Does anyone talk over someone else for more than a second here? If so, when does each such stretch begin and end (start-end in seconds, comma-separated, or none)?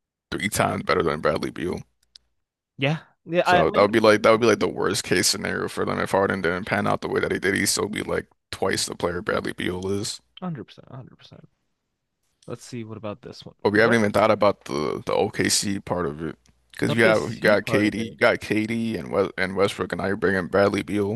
3.4-4.8, 16.9-18.2